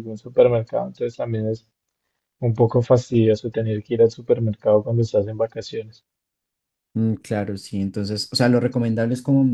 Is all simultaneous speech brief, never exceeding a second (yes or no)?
yes